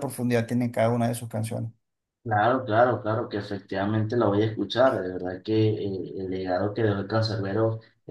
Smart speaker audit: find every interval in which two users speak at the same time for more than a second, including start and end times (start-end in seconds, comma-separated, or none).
none